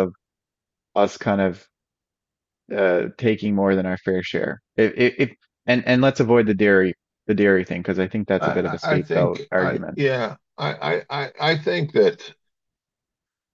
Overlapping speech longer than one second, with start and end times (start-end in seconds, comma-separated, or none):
8.4-10.0